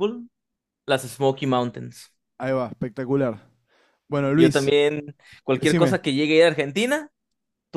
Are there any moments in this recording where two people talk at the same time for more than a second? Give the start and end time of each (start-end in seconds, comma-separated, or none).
none